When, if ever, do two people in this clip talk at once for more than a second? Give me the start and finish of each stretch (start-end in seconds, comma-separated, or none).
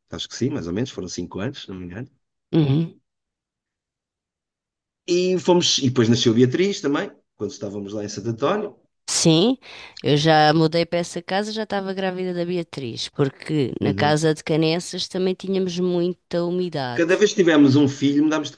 none